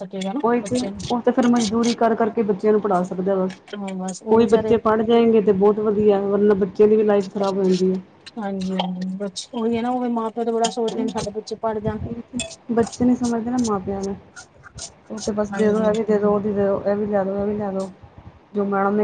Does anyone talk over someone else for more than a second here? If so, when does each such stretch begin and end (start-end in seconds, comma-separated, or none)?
none